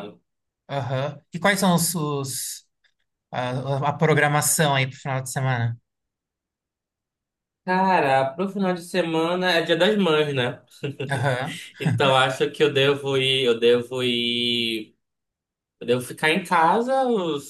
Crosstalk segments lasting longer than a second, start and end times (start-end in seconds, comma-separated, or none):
none